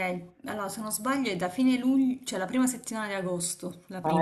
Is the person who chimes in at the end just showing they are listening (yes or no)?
no